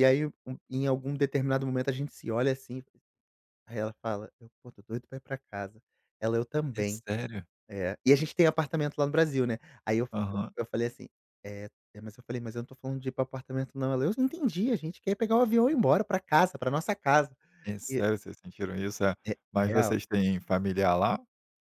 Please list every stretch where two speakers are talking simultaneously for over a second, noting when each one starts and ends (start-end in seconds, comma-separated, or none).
none